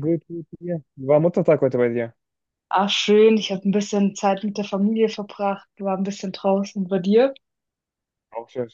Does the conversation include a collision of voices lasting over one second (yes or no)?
no